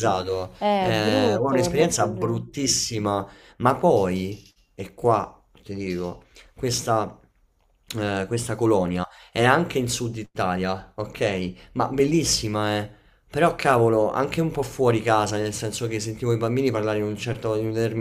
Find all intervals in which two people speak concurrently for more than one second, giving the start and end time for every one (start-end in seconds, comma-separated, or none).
0.6-2.4